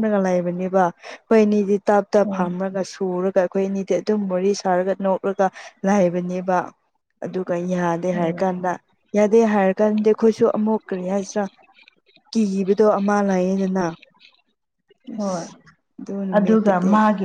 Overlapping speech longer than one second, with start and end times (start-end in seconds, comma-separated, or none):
none